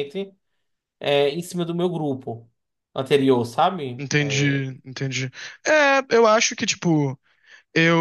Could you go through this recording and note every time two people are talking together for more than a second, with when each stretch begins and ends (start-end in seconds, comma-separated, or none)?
none